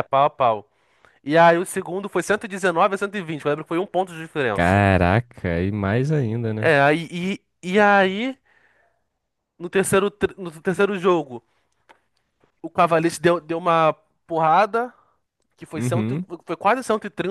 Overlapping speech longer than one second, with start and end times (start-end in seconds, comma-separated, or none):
none